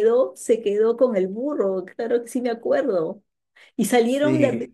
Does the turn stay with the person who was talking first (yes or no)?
yes